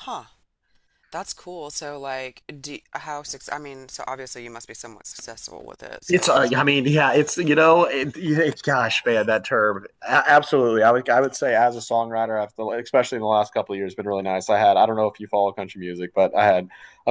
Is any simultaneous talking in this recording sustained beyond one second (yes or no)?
no